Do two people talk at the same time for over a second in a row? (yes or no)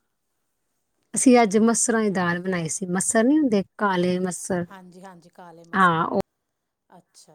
no